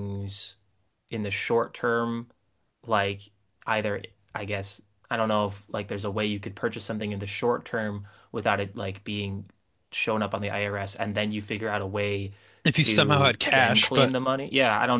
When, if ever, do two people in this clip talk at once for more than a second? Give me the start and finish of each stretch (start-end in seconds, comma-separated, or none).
12.7-14.1